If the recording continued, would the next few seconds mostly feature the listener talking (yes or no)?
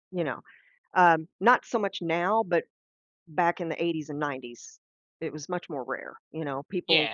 no